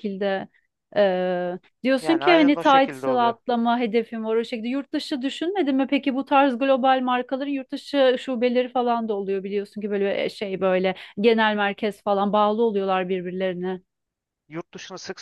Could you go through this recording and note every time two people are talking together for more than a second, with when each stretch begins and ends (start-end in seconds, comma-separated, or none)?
2.0-3.3